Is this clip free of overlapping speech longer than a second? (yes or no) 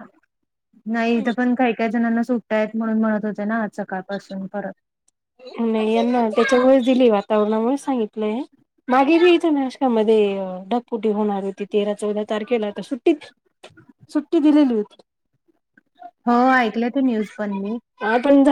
yes